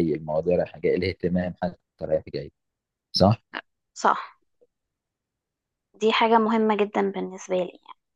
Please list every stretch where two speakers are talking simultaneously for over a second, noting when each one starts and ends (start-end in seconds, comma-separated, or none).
none